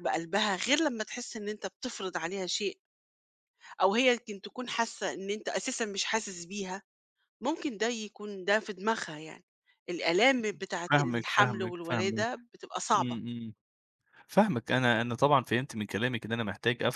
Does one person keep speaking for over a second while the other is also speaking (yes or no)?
yes